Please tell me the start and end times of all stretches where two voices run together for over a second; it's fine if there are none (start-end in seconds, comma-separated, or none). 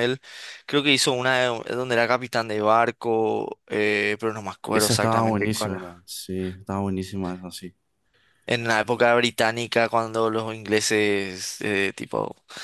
4.7-5.9